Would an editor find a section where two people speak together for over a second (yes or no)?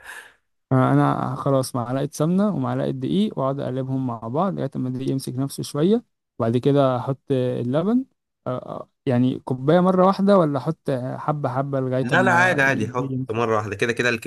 yes